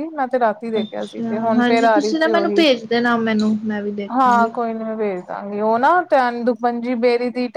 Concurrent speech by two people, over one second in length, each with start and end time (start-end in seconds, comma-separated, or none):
0.8-2.6